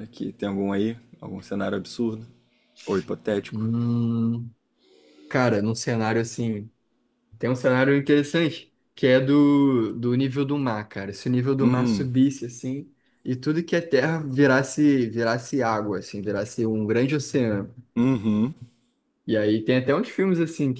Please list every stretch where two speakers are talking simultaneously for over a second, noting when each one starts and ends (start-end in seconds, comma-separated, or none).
none